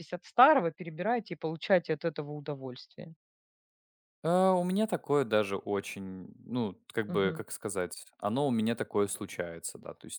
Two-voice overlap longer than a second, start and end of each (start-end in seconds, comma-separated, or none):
none